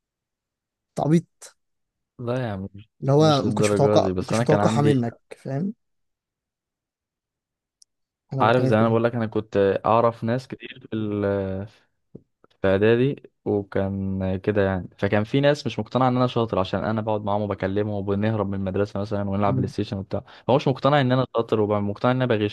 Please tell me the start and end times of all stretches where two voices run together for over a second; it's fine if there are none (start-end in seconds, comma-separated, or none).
3.0-4.9